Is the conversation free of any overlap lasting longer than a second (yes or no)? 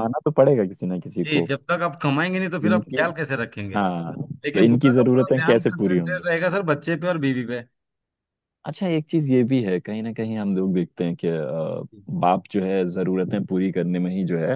no